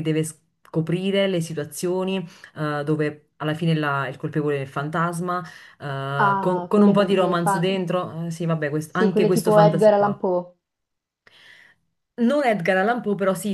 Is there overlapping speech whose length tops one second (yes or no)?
yes